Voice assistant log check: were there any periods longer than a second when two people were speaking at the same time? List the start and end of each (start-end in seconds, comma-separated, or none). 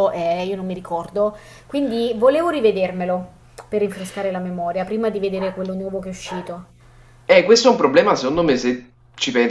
none